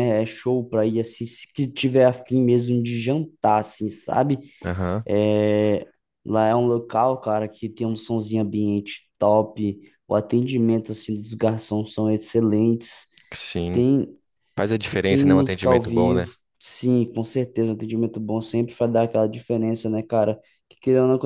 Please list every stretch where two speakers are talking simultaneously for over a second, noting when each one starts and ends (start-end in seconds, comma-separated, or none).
15.1-16.3